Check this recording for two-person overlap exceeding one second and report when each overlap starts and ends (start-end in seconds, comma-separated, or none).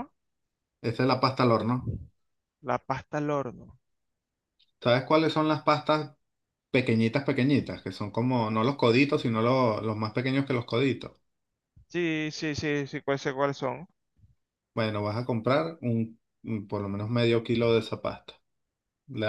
none